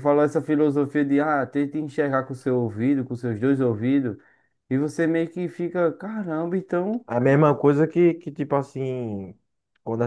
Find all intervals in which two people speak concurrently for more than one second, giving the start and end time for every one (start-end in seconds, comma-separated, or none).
none